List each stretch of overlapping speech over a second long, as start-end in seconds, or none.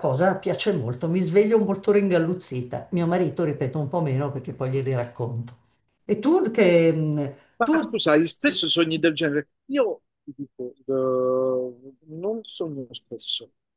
none